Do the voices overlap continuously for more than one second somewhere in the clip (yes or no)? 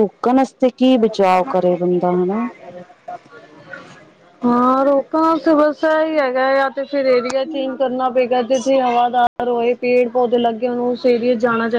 no